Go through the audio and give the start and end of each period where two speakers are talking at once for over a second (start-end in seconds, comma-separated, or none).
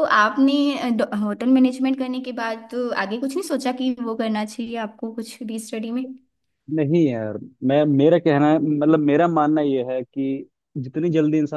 none